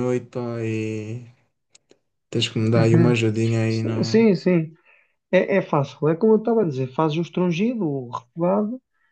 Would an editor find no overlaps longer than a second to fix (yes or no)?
yes